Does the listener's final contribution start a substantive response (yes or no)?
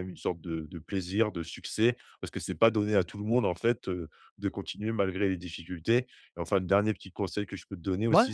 no